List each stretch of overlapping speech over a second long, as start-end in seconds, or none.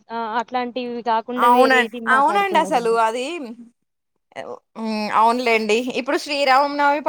1.5-2.9